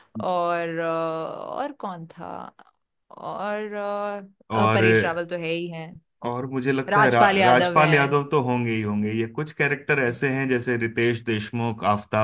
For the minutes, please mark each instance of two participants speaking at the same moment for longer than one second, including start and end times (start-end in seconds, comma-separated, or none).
6.9-8.2